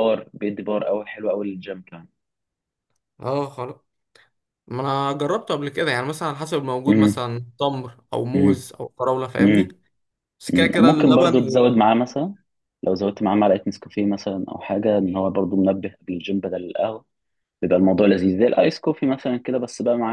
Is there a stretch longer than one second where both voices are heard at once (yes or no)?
yes